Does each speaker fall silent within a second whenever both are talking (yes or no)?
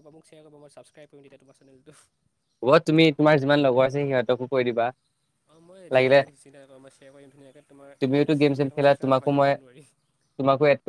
no